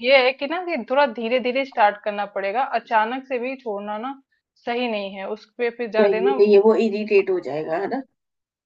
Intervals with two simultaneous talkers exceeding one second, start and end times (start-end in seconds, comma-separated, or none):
none